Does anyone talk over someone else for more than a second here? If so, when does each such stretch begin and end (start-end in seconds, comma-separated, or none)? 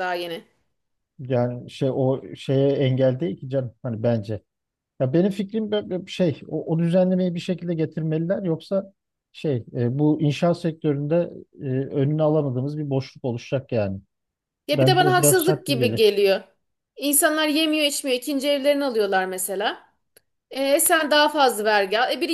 14.7-16.0